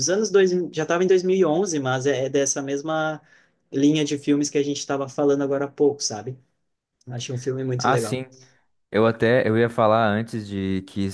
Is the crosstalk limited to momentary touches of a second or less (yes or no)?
yes